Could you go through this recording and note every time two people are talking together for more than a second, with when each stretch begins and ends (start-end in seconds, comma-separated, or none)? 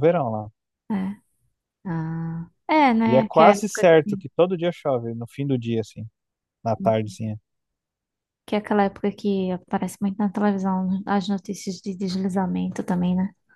3.0-4.2